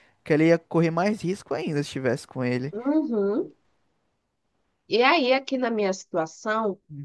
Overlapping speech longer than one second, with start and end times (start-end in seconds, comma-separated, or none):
none